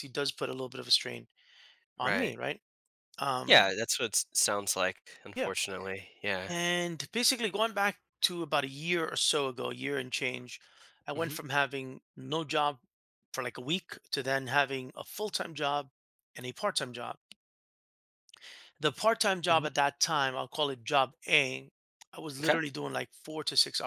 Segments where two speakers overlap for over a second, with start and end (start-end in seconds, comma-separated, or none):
none